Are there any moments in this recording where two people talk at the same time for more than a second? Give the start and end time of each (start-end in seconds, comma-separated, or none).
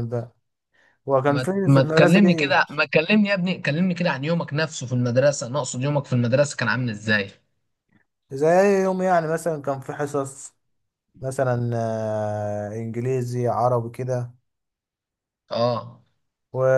1.3-2.5